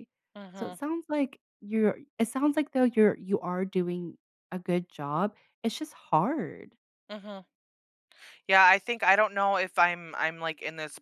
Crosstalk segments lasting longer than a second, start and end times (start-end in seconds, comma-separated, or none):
none